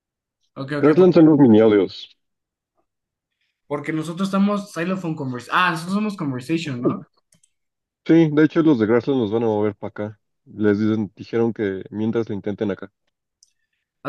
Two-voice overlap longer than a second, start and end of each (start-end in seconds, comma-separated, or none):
none